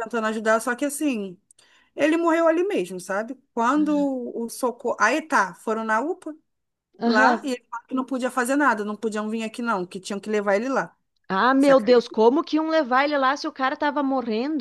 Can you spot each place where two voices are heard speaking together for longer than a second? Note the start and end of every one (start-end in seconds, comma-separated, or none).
none